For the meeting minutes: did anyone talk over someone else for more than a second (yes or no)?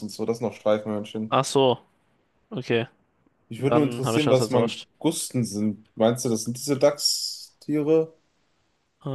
yes